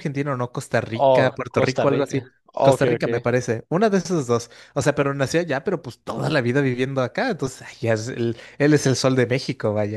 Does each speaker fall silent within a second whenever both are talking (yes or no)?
no